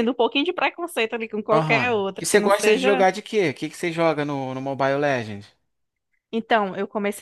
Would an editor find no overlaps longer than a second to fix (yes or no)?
no